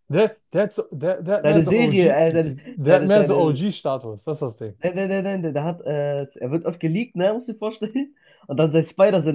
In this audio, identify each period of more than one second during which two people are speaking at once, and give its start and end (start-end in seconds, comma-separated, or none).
1.4-3.5